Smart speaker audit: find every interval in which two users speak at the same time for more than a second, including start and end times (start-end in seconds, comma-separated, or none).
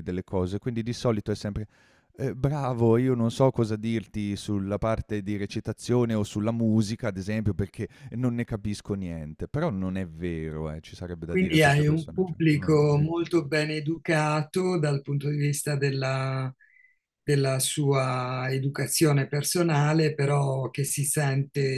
11.3-13.1